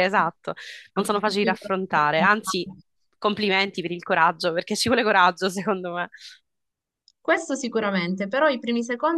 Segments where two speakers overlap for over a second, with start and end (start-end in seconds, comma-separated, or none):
0.9-2.7